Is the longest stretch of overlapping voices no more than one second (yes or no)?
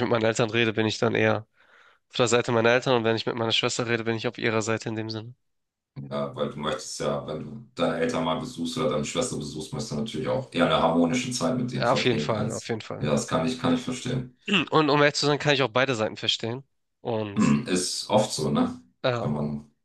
no